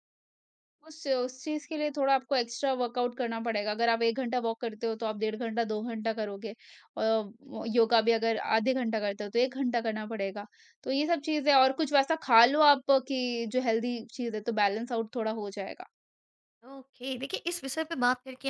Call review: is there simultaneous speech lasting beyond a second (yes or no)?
no